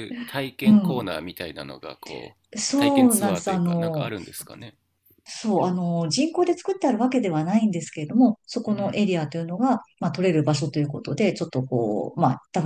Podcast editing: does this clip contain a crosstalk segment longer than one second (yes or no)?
yes